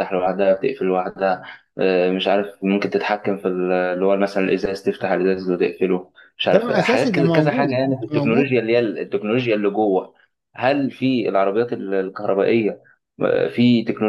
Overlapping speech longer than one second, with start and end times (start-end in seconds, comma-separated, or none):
6.5-8.6